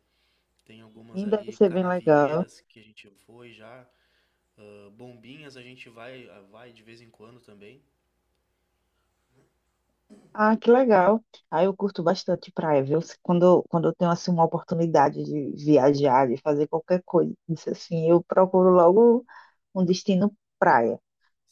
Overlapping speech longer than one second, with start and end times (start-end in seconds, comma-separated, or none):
1.1-2.5